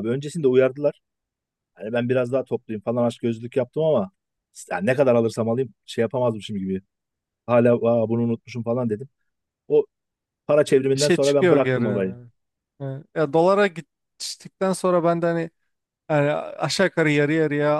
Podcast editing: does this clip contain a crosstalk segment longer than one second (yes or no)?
yes